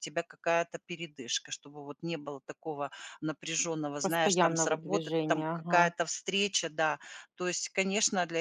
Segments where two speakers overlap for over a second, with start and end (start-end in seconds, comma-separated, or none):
4.0-5.9